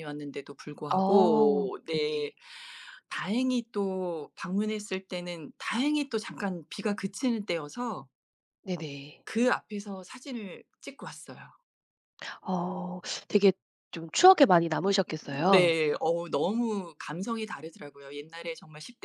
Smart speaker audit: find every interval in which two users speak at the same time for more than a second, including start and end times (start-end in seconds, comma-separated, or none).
1.0-2.3